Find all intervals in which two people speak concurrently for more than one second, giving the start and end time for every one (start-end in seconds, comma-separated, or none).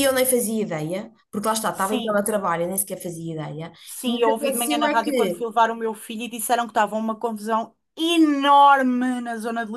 3.8-5.4